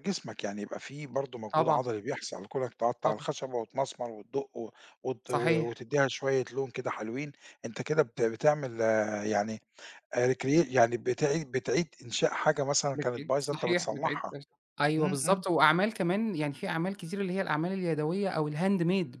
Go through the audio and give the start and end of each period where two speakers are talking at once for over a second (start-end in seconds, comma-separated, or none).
12.9-14.3